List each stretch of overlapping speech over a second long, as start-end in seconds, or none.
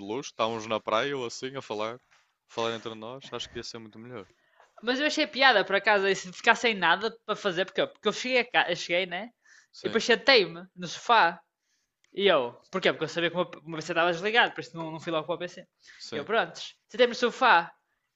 none